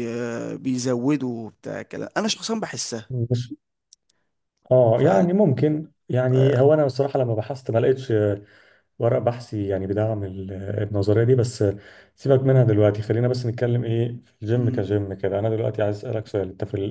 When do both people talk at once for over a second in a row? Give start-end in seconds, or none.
none